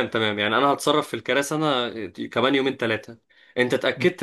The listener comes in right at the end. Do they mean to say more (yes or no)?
no